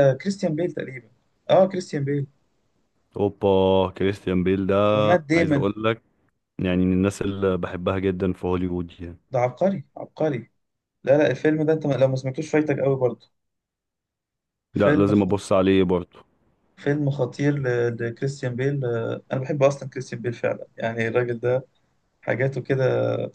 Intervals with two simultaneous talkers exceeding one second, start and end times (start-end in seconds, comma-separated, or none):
none